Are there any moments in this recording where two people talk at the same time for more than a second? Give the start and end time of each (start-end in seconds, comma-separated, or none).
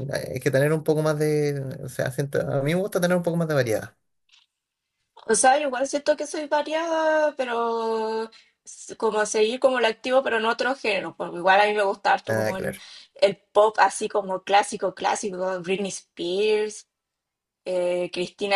none